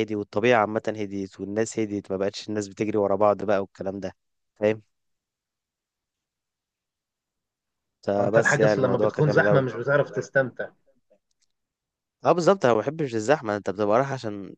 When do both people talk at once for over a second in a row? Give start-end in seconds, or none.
8.2-9.6